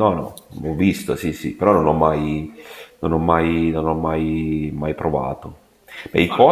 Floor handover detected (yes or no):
no